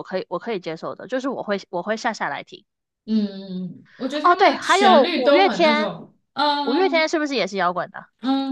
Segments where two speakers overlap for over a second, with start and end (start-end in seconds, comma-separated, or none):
4.2-5.9